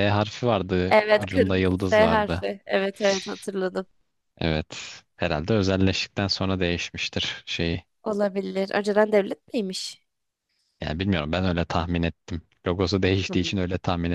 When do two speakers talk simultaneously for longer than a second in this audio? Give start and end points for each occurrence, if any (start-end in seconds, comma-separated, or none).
0.9-2.4